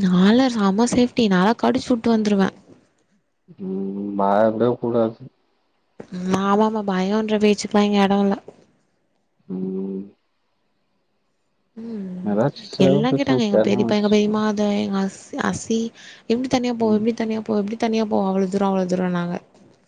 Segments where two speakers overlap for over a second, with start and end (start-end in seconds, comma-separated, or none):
12.8-14.3